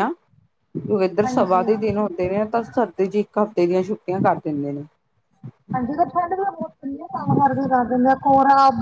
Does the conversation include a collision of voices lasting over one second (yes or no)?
no